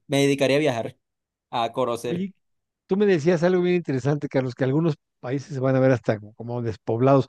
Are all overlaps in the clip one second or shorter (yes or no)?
yes